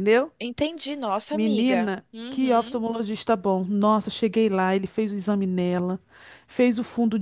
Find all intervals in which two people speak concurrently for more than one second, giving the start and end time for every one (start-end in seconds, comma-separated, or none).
1.3-2.8